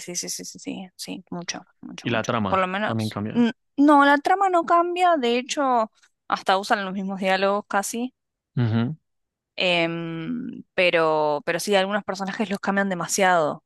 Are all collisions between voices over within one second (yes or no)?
no